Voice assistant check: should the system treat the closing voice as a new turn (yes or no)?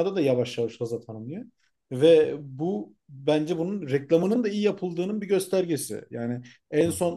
no